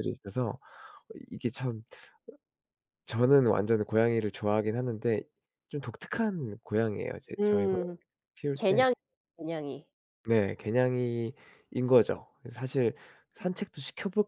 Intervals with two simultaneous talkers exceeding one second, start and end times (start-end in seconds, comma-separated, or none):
none